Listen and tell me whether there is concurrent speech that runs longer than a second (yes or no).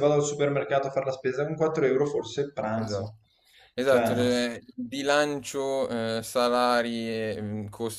no